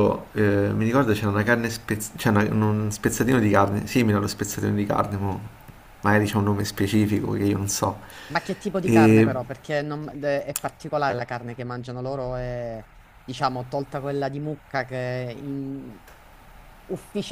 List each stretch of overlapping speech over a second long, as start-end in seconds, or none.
none